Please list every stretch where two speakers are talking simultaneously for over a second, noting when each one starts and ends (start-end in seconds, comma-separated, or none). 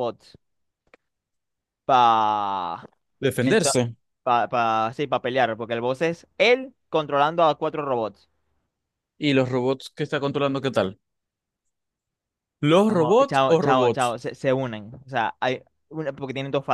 12.9-14.1